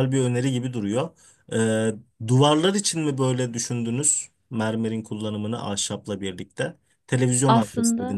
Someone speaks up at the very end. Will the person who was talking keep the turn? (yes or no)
no